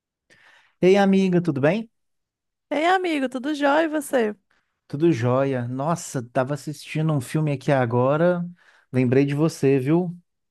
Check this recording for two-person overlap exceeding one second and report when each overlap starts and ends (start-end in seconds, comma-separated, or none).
none